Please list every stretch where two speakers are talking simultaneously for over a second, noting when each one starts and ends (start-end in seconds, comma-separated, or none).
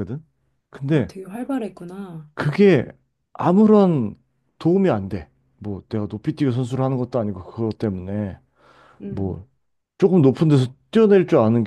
none